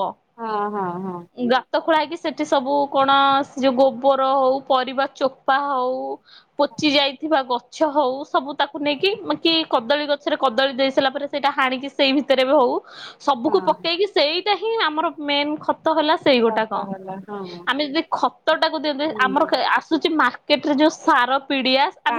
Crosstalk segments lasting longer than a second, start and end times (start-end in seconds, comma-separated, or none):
none